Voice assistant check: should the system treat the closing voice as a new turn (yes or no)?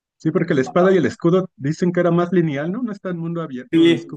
yes